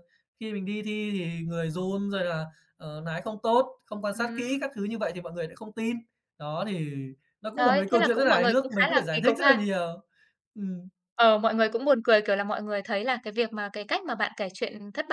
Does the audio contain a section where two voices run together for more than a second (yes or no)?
yes